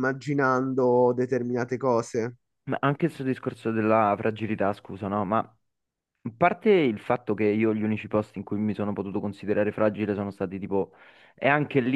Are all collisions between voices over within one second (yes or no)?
yes